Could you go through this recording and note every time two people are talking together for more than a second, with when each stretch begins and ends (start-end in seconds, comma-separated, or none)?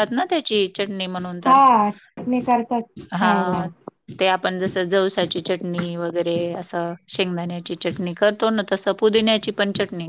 none